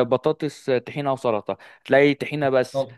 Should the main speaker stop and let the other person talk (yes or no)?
no